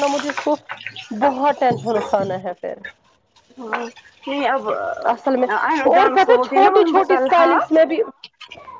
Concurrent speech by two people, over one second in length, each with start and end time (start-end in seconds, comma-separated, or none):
6.0-7.6